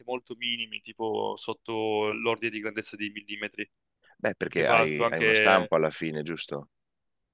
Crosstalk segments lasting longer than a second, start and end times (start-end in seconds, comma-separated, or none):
4.5-5.7